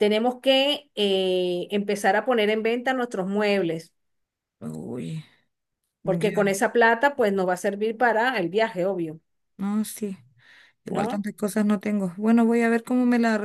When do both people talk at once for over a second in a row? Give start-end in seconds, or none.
none